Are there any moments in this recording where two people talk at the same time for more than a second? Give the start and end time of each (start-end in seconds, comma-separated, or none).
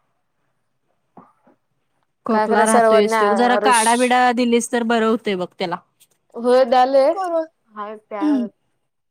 2.3-3.8